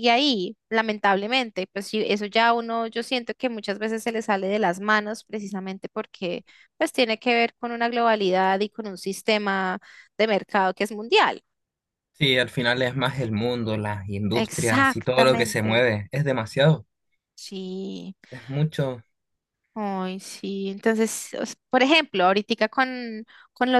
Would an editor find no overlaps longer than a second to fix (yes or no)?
no